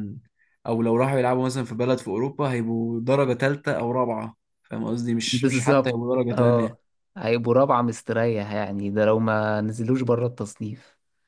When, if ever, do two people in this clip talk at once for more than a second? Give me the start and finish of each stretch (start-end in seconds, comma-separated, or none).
5.3-6.8